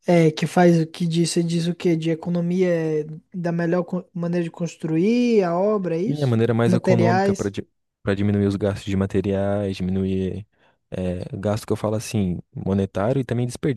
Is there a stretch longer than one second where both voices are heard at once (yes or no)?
yes